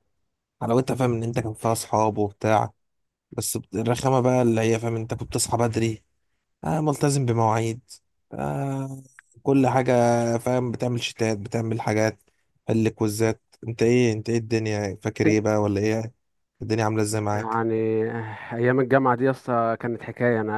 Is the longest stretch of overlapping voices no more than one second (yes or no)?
yes